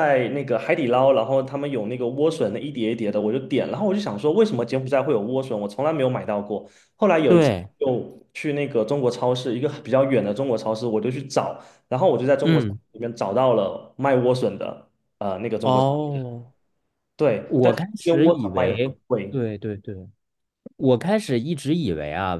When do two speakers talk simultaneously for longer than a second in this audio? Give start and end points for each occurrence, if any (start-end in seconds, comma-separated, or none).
17.5-19.4